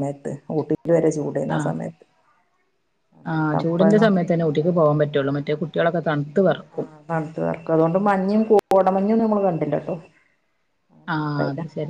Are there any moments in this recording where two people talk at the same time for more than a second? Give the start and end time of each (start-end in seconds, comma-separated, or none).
none